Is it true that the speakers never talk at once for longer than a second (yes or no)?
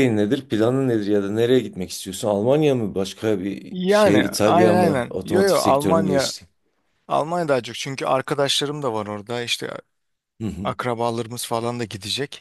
no